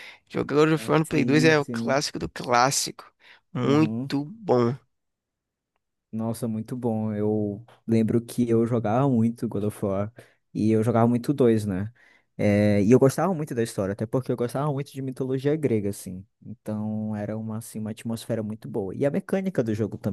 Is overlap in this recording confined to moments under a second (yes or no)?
no